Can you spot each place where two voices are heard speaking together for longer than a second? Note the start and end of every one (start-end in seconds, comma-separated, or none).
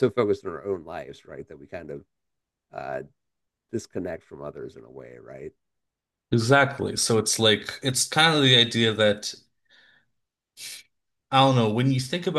none